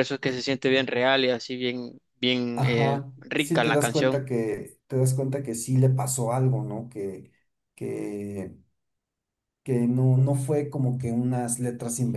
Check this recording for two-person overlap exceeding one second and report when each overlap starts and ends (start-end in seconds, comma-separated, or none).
2.5-4.2